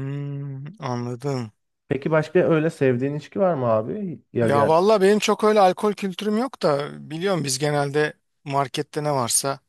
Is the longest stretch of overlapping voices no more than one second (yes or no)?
yes